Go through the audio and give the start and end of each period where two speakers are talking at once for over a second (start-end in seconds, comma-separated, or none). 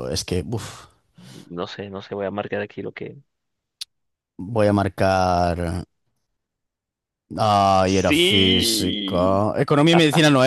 8.0-9.4